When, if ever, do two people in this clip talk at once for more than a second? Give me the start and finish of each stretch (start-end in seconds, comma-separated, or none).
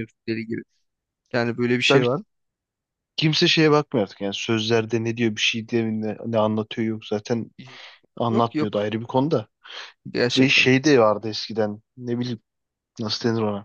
none